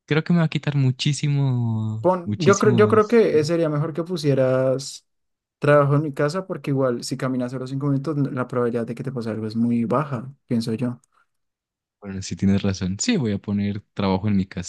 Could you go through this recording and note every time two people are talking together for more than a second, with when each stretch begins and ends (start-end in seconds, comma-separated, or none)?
2.0-3.6